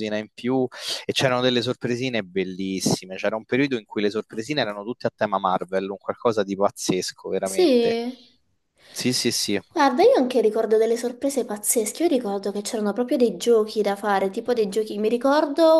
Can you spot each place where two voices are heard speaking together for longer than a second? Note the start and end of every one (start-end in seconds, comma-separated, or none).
none